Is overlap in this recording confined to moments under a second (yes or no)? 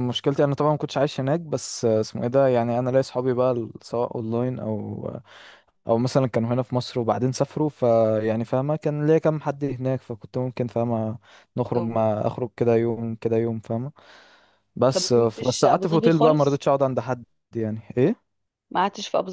no